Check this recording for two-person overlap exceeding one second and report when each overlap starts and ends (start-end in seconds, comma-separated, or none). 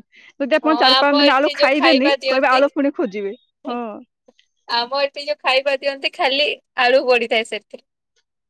0.7-2.6